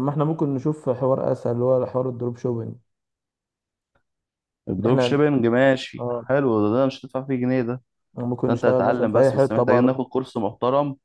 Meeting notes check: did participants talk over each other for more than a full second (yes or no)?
yes